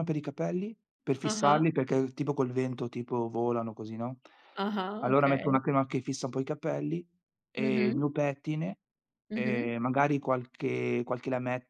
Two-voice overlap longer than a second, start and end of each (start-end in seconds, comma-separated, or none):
none